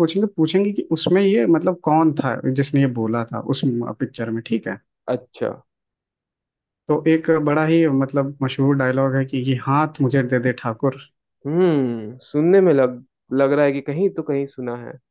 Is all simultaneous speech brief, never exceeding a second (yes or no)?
yes